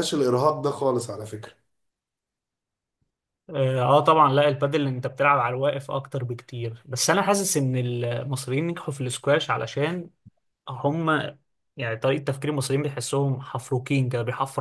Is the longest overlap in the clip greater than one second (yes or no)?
no